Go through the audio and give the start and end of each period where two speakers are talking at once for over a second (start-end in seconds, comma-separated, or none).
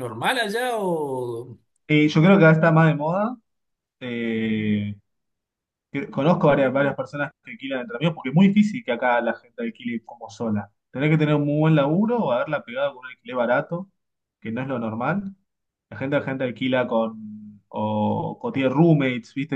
none